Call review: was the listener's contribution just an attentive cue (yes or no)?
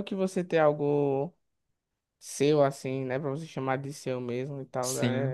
no